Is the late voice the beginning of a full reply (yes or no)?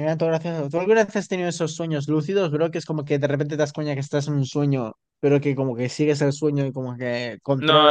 yes